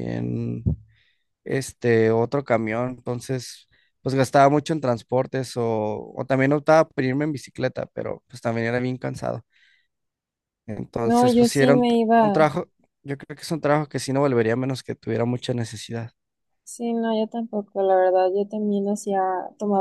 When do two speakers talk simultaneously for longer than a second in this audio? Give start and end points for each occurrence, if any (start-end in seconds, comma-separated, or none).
11.0-12.4